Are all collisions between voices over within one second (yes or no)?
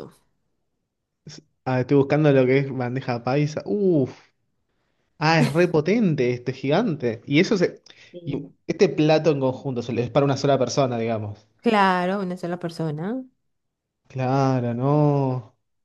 yes